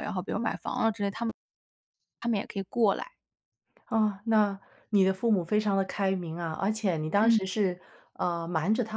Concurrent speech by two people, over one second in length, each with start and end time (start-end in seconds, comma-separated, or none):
none